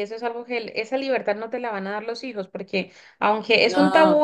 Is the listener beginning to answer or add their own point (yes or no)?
no